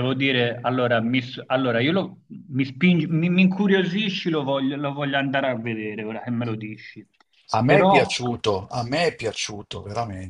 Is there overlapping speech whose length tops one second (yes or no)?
no